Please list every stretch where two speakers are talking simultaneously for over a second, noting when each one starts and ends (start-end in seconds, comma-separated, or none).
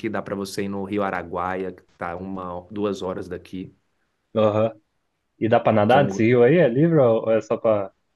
none